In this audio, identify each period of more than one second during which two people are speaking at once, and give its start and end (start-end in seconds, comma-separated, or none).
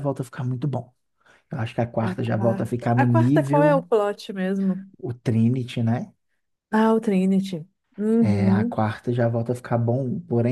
2.0-3.9